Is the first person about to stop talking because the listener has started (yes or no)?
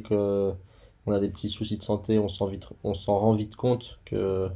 no